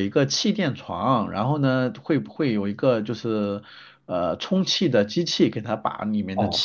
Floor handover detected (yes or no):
yes